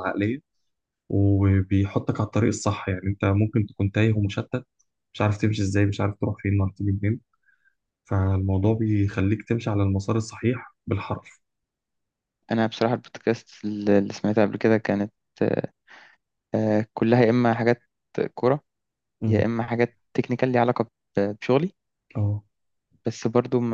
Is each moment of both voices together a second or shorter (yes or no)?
yes